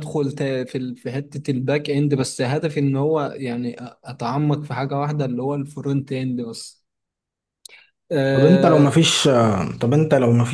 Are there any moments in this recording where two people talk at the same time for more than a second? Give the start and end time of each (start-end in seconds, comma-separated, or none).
none